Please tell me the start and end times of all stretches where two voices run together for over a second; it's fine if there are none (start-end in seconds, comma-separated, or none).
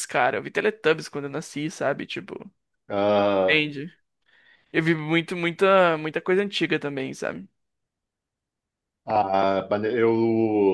none